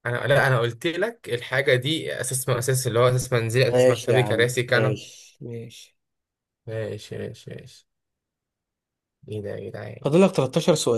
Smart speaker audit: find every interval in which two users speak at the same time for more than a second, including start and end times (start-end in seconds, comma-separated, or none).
3.7-5.0